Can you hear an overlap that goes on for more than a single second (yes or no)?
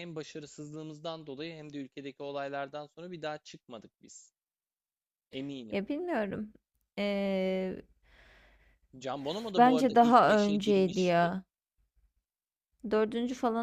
yes